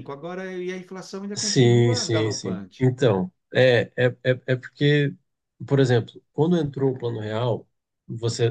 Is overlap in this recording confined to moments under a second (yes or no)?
no